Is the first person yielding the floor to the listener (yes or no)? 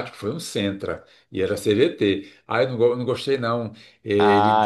yes